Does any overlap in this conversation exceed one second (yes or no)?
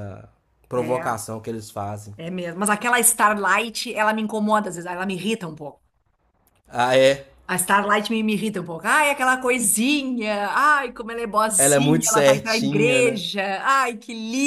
yes